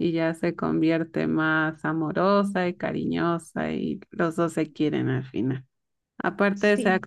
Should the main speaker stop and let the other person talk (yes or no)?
no